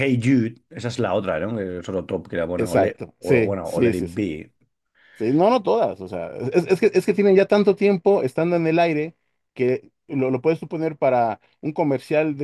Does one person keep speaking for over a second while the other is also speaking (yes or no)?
yes